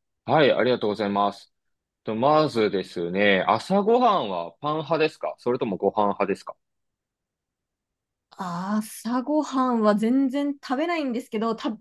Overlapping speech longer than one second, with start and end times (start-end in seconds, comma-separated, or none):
none